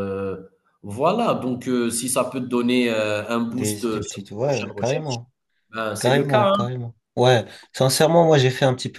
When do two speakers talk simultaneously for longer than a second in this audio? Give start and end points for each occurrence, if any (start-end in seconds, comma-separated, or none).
3.5-5.2